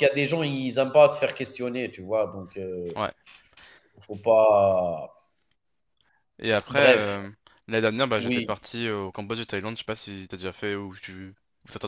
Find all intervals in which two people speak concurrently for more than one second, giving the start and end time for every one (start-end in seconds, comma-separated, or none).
none